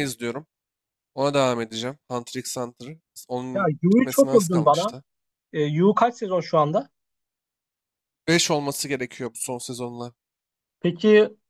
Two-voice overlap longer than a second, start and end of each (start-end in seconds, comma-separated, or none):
3.5-5.0